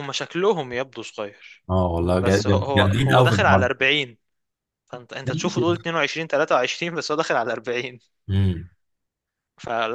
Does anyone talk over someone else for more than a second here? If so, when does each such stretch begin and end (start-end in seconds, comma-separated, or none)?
2.2-3.7